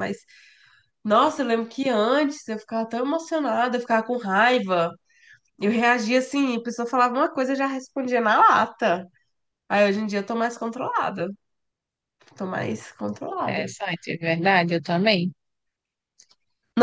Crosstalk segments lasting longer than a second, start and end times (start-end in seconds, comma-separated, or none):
none